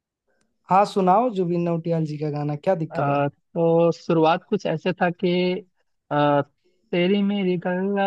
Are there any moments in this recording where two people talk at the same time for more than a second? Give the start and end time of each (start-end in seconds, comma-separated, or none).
none